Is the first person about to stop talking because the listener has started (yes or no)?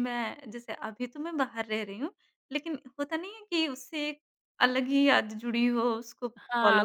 yes